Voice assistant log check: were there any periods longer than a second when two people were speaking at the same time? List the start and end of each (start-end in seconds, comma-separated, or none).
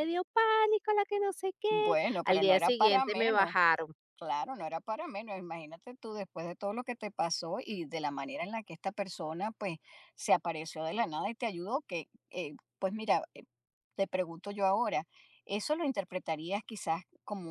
1.7-3.6